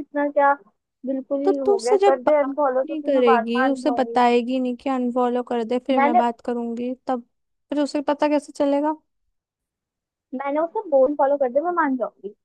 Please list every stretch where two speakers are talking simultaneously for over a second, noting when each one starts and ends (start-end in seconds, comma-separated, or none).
1.4-4.2